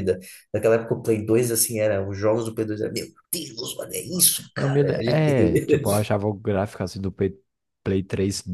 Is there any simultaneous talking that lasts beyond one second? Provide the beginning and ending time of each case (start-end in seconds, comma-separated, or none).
4.5-6.0